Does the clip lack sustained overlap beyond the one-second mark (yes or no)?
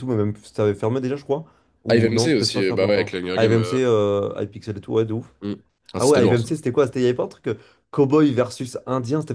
no